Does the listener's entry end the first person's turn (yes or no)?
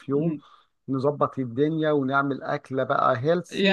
yes